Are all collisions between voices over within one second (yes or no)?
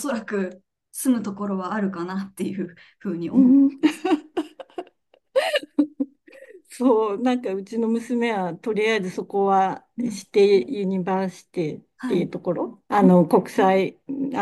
yes